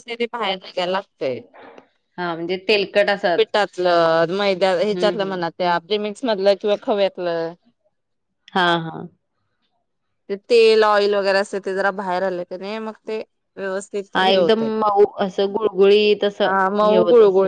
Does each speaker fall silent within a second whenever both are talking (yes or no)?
yes